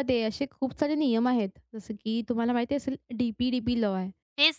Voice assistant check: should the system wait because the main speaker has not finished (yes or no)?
no